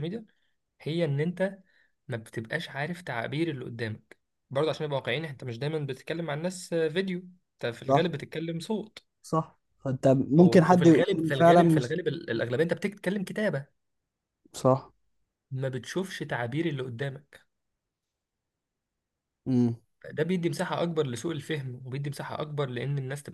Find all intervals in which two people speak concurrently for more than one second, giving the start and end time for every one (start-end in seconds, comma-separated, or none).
10.4-11.9